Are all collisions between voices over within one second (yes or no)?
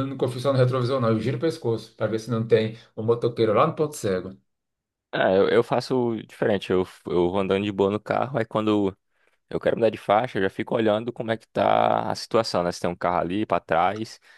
yes